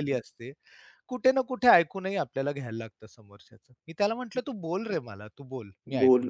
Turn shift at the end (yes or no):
yes